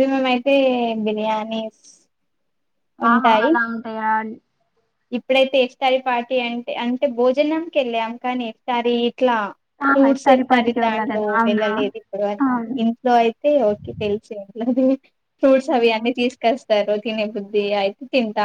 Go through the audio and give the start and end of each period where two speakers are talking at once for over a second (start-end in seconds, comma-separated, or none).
9.9-11.7